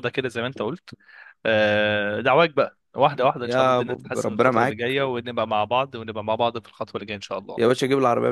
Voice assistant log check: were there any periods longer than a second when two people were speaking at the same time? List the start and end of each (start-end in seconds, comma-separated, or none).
3.4-4.8